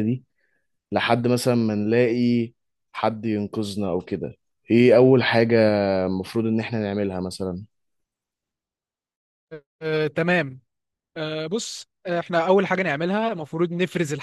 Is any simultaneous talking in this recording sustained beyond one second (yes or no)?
no